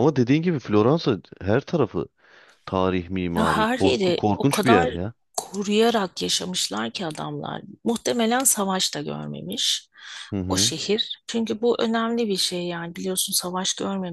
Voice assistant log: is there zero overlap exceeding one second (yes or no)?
no